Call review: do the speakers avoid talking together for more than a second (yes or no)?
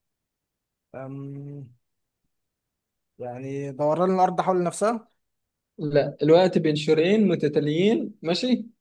yes